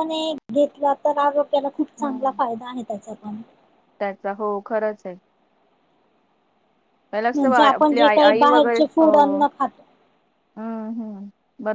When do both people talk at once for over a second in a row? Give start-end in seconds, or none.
7.3-9.4